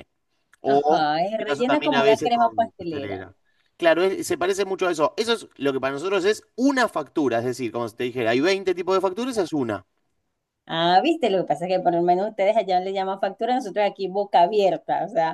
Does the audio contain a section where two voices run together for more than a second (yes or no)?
yes